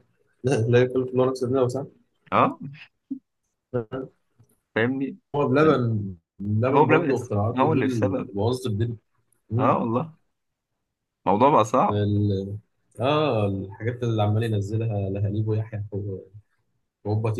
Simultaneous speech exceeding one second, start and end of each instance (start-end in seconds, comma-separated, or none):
6.7-8.3